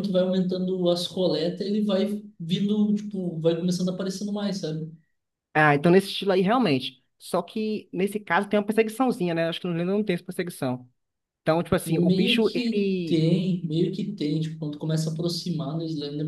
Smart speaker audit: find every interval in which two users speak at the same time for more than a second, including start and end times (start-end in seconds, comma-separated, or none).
11.9-13.2